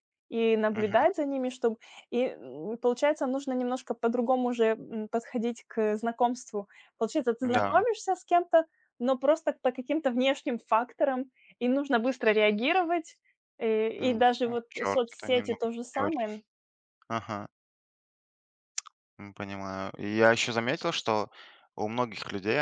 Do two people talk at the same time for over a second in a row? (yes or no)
yes